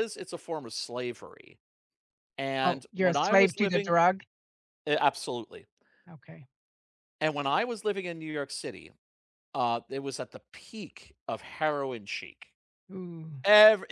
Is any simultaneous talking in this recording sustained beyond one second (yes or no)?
yes